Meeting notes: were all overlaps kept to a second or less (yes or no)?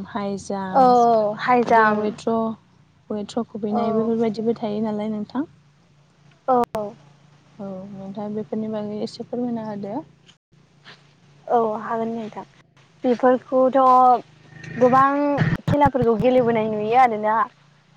no